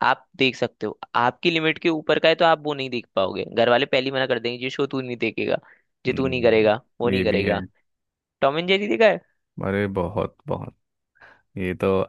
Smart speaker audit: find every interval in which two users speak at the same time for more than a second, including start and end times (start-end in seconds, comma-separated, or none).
6.1-7.6